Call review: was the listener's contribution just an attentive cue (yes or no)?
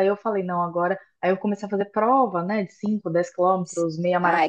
no